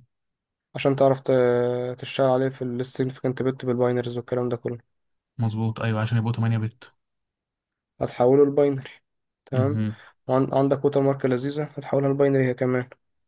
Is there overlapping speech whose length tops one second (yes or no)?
no